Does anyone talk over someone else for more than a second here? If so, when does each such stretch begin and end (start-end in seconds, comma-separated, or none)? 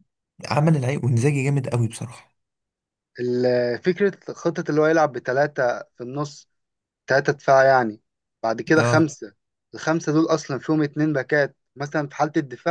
none